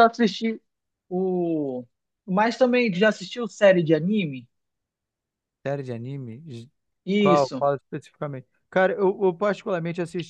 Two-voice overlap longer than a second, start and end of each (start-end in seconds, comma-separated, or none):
none